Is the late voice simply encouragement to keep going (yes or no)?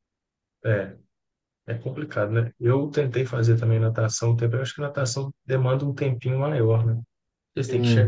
yes